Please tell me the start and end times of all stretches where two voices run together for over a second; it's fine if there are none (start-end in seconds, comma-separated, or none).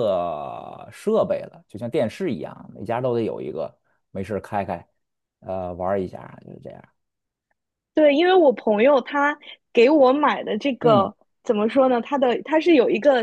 none